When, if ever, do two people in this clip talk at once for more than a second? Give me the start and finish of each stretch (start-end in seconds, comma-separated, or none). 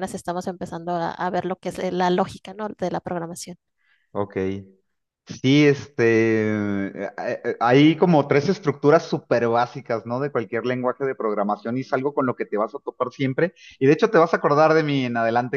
none